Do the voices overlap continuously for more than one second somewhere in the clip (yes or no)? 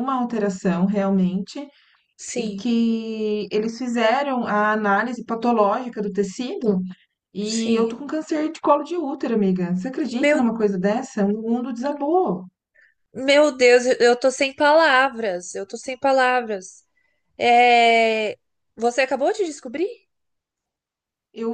no